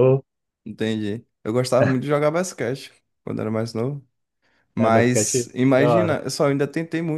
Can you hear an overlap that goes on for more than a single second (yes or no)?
yes